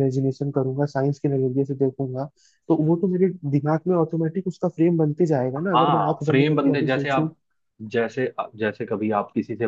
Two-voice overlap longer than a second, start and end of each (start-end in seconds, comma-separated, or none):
5.6-7.3